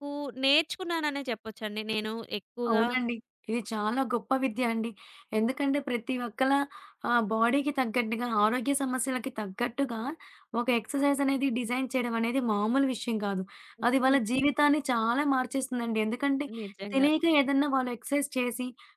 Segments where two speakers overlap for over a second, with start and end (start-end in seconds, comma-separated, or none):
none